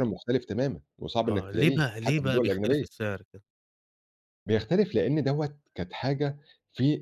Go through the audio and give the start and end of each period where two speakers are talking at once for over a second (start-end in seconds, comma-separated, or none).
1.3-3.0